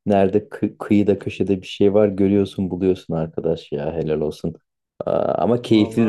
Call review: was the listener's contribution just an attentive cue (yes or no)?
yes